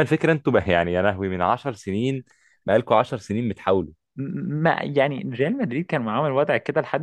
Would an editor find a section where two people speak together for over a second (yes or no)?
no